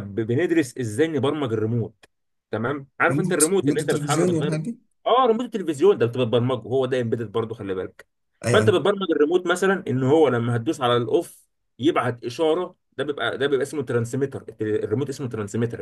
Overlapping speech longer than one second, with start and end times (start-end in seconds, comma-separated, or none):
3.1-4.6